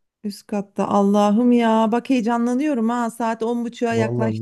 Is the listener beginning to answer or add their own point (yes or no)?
yes